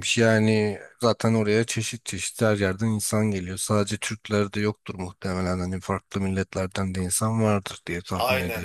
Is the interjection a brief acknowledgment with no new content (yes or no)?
no